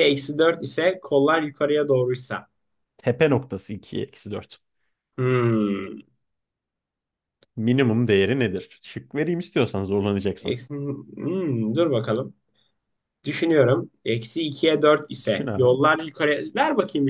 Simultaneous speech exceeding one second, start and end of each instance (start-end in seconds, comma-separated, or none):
none